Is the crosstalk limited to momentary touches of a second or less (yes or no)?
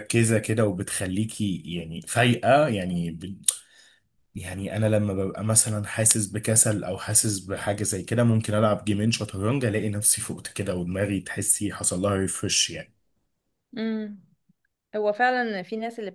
yes